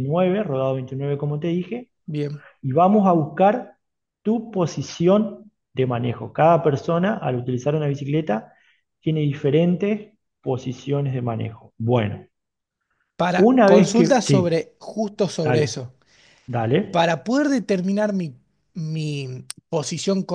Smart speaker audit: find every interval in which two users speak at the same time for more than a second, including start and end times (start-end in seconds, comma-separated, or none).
13.4-14.6